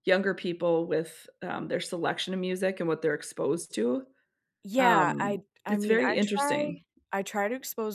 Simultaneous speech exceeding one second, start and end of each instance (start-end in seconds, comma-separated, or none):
4.8-6.8